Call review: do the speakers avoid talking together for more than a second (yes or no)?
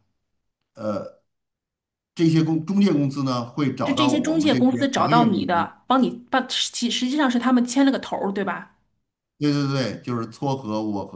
no